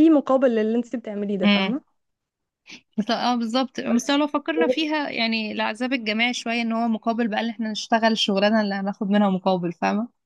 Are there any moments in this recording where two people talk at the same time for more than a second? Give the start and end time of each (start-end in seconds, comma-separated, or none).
none